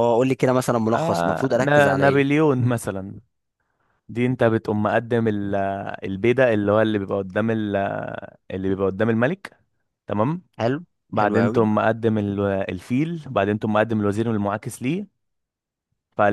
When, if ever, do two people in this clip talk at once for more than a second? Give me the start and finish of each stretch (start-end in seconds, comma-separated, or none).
0.9-2.4